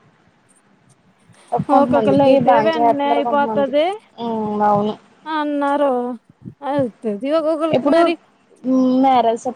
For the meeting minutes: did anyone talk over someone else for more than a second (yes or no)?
yes